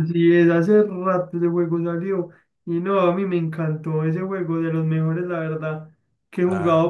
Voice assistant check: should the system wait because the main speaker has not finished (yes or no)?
yes